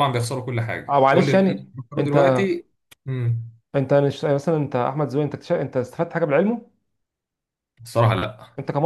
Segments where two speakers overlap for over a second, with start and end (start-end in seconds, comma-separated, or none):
0.9-2.4